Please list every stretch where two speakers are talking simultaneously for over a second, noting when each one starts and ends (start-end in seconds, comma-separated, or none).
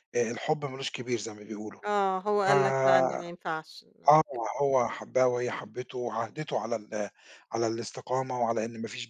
none